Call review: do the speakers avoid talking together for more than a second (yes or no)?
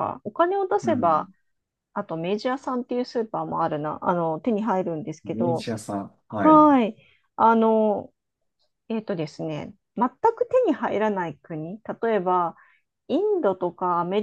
yes